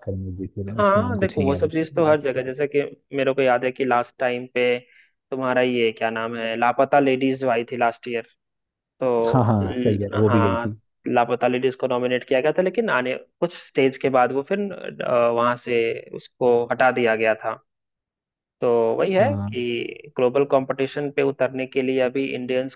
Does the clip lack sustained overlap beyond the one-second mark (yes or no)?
no